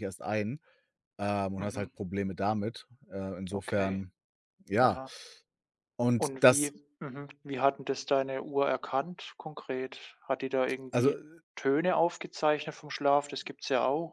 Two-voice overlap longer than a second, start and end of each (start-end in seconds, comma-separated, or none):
none